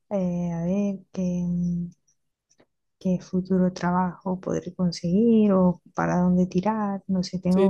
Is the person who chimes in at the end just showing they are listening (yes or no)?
no